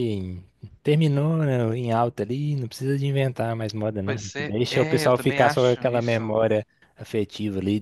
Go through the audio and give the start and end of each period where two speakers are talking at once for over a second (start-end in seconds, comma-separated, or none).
4.0-6.3